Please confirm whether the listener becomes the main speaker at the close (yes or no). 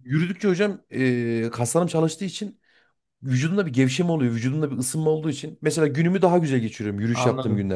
yes